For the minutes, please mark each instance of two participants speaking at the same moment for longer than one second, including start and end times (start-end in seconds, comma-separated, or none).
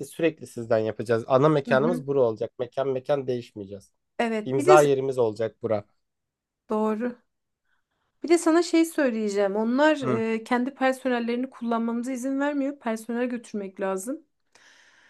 none